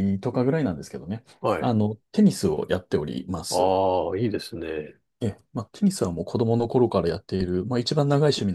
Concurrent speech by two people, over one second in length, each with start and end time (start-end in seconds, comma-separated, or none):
none